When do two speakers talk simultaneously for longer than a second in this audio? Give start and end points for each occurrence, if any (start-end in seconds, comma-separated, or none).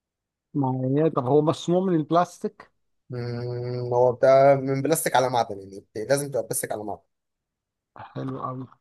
none